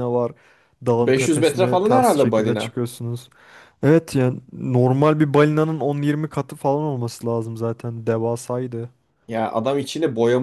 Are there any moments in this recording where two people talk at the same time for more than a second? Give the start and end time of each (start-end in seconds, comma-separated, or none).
1.0-2.8